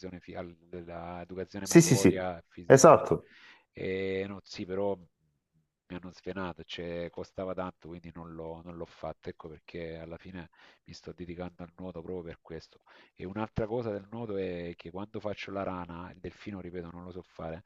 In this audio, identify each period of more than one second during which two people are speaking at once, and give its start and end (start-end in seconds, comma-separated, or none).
1.6-3.0